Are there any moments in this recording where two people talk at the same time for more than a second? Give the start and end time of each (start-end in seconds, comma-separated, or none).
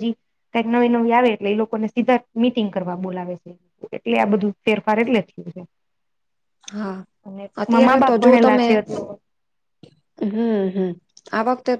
none